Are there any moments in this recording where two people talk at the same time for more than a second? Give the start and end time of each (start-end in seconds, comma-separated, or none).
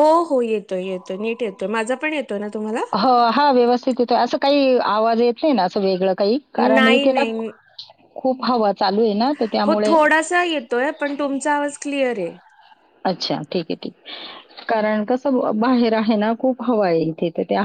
none